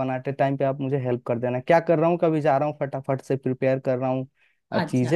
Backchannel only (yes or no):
yes